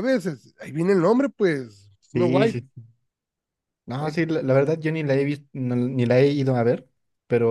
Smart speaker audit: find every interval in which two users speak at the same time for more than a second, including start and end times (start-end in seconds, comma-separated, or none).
none